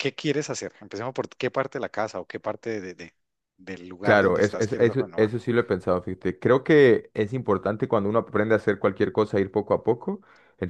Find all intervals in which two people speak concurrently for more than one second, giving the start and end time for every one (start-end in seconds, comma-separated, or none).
4.0-5.3